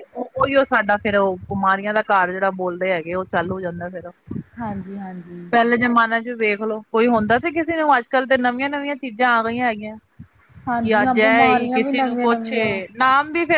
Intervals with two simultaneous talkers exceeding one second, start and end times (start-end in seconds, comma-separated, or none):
10.8-12.5